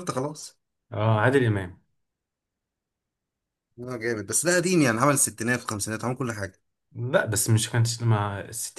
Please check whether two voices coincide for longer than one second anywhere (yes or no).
no